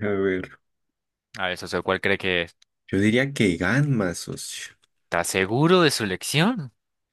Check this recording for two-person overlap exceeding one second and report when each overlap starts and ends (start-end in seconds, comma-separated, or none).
none